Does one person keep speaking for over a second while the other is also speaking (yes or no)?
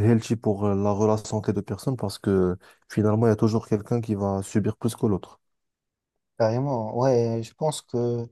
no